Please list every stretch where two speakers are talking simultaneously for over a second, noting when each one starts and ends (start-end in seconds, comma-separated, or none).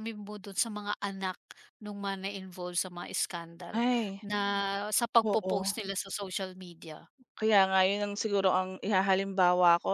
none